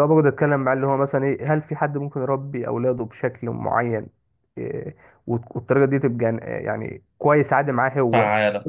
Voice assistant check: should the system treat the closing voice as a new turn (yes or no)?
no